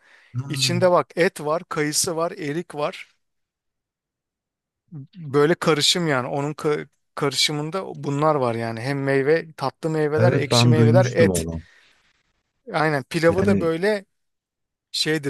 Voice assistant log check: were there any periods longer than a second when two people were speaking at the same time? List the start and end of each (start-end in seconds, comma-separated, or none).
10.2-11.5